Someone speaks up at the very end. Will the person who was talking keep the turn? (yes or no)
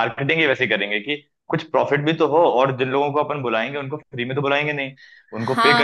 no